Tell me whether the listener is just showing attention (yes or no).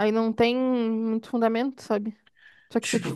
no